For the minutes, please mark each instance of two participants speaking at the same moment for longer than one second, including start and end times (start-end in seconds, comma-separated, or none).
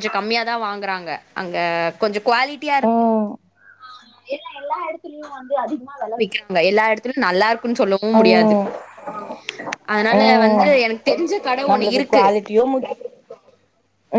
none